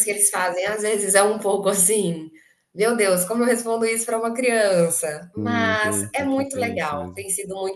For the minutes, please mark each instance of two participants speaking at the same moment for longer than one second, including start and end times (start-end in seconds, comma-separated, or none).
5.4-7.2